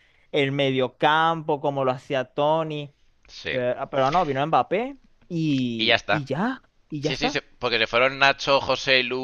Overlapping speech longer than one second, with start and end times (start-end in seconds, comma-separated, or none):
none